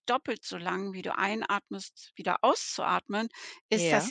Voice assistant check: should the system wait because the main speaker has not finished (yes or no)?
yes